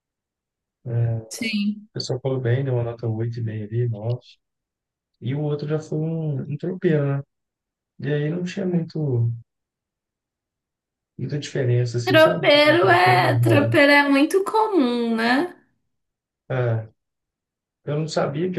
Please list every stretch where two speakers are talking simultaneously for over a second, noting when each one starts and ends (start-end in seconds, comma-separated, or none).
12.0-13.7